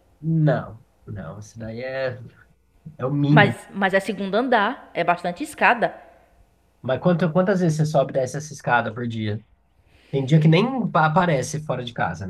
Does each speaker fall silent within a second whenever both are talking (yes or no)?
yes